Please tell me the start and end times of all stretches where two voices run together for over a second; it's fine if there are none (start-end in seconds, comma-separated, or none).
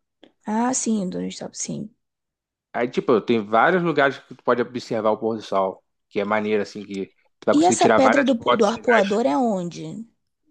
7.5-9.2